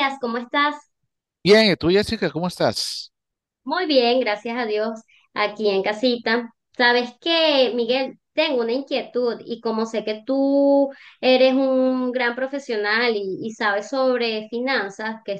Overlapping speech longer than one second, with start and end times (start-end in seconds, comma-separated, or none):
none